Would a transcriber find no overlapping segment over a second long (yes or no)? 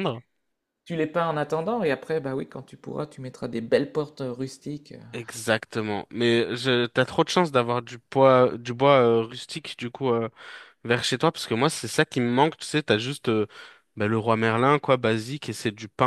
yes